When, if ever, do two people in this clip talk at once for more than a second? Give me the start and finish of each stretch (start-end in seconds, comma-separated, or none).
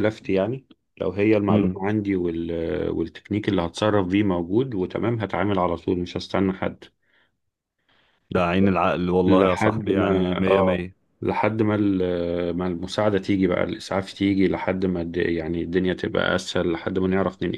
9.2-10.9